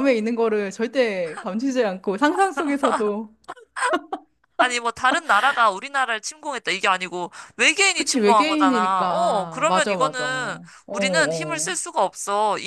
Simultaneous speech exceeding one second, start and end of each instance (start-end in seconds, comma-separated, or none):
7.9-11.7